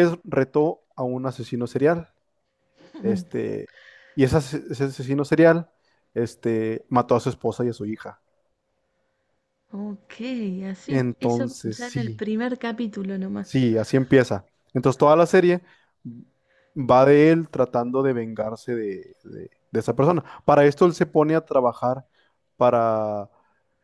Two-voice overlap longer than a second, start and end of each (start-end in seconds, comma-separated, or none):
10.9-12.3